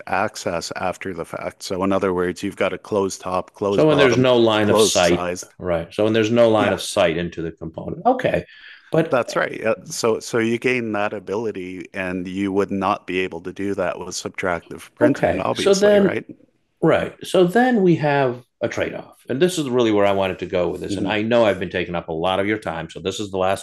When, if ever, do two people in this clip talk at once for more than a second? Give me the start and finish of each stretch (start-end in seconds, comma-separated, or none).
3.7-5.5, 15.0-16.2